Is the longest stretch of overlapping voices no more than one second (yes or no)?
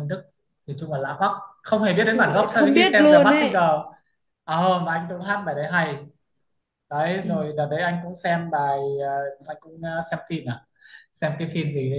no